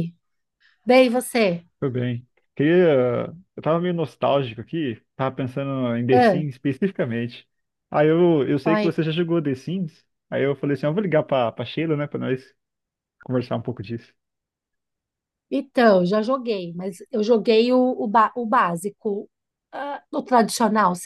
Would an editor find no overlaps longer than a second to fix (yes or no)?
yes